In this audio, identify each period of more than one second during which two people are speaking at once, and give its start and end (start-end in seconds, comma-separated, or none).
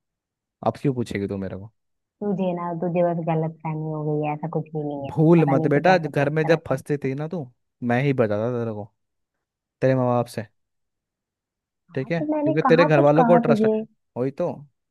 5.1-6.8, 11.9-13.7